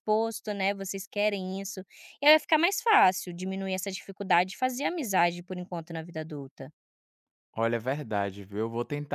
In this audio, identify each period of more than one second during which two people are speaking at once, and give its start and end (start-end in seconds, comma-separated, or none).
none